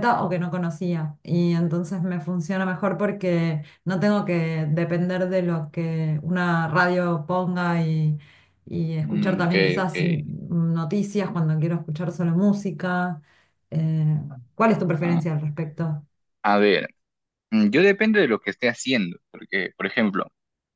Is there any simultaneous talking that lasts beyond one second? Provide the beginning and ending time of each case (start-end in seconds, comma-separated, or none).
9.0-10.3